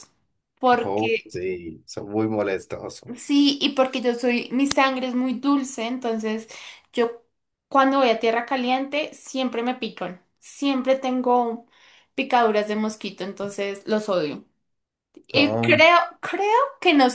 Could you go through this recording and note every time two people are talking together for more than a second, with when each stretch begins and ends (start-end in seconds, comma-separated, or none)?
none